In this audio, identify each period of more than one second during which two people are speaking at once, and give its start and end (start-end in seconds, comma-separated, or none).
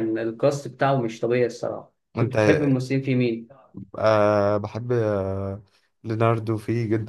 none